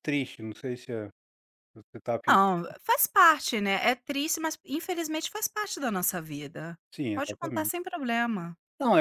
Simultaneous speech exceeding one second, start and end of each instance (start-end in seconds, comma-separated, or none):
none